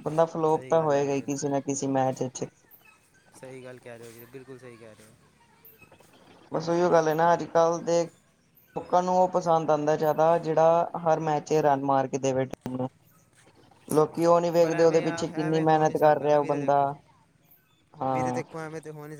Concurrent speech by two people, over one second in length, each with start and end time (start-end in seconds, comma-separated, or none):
14.6-16.8